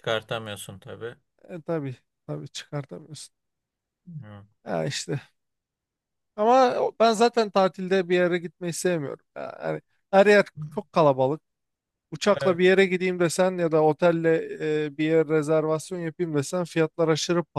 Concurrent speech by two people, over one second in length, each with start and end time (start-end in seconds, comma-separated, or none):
none